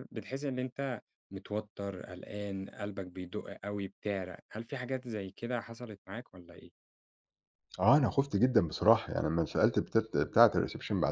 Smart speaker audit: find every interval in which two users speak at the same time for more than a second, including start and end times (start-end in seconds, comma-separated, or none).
none